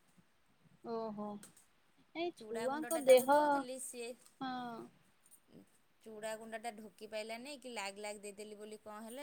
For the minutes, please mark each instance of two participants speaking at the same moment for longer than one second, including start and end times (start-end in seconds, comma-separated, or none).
2.4-4.1